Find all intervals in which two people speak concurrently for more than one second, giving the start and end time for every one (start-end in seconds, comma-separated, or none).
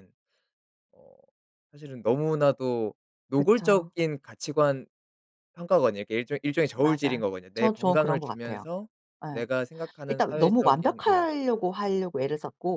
6.8-8.7, 10.1-11.3